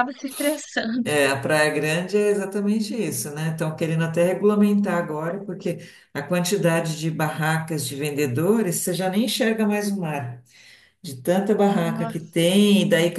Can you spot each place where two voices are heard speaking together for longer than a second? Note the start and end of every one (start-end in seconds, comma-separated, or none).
none